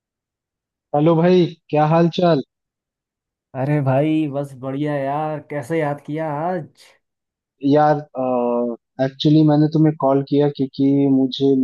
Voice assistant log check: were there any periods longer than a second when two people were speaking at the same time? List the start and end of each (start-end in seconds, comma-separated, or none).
none